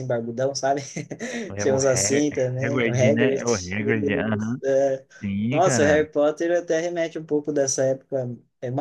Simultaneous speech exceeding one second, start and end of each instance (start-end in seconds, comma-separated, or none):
1.6-4.6